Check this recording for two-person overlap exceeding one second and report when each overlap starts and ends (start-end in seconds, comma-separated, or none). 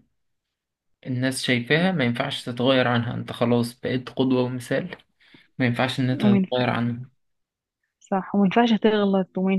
none